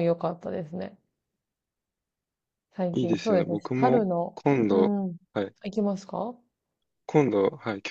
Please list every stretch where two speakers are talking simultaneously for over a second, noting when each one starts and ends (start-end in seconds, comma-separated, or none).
3.0-5.0